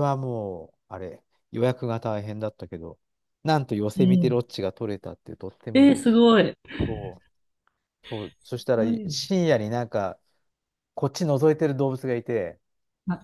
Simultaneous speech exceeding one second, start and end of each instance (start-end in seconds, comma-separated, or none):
none